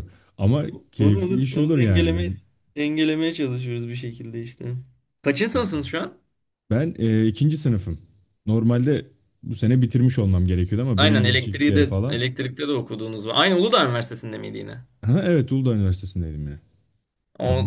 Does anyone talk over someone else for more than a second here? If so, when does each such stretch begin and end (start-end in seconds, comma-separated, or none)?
1.0-2.3, 11.0-12.2